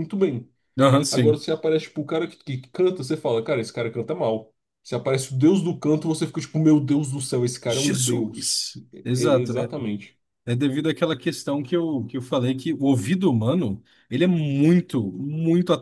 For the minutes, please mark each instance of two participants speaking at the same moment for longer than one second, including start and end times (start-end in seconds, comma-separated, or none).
7.7-9.5